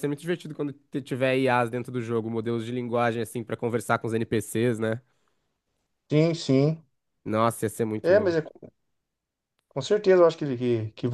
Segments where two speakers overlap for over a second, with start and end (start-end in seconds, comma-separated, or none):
none